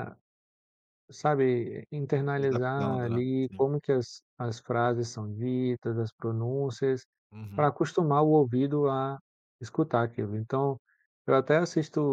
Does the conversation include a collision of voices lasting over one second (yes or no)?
yes